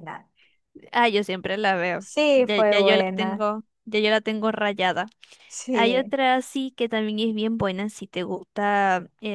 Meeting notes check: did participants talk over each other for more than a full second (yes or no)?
yes